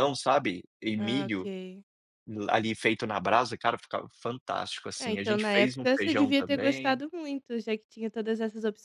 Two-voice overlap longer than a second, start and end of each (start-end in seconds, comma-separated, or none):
5.0-7.0